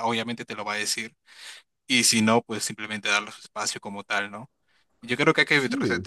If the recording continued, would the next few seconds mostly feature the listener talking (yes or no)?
no